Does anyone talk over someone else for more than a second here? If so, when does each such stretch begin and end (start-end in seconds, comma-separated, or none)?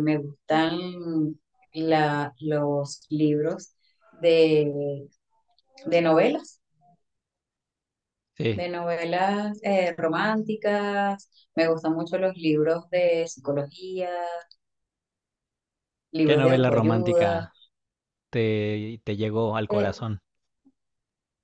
16.2-17.5